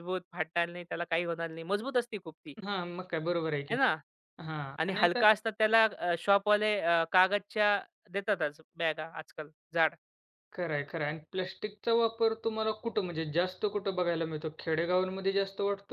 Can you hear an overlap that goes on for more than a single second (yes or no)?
no